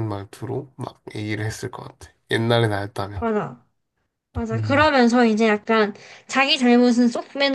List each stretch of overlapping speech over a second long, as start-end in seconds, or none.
none